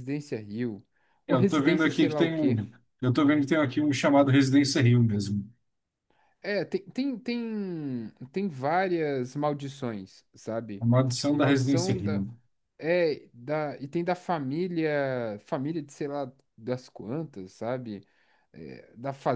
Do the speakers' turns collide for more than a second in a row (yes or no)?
yes